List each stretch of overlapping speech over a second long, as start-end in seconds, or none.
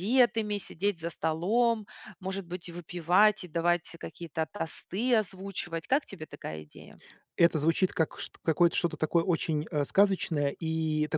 none